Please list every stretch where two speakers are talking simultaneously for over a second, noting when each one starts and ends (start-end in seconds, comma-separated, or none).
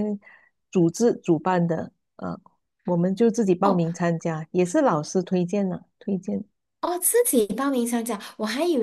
none